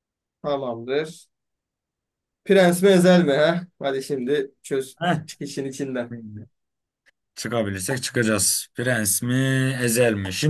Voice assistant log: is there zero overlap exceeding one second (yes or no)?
yes